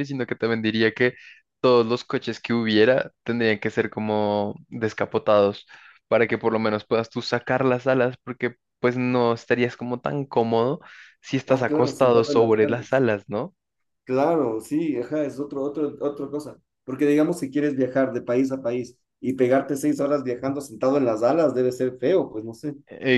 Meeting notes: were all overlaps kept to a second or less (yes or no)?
no